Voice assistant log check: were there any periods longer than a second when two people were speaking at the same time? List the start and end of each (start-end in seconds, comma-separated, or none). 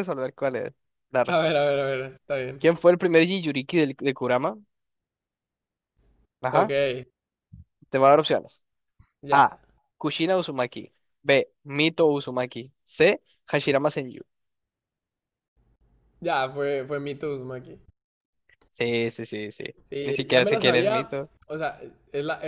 20.0-21.3